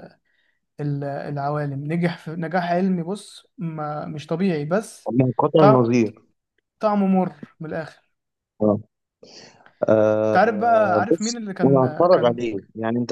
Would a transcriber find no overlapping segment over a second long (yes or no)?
no